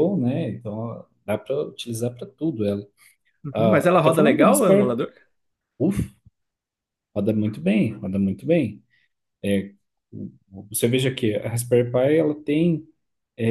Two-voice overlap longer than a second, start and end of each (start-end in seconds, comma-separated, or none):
3.5-5.0